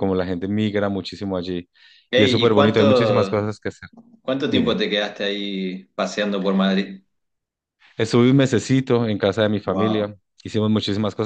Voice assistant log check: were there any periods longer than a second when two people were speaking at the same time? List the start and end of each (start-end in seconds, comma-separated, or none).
2.1-3.5